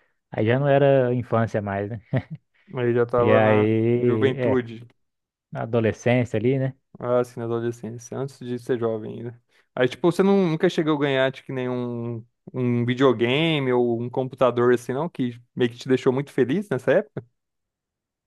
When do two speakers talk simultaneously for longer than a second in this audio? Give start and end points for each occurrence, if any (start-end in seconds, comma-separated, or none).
3.2-4.7